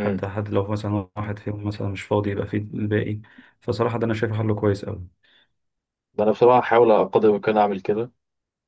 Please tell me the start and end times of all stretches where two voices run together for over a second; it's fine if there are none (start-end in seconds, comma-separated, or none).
none